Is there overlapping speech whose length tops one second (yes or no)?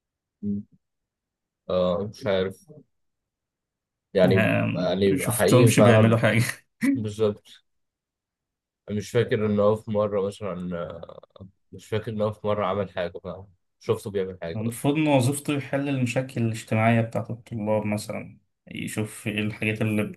yes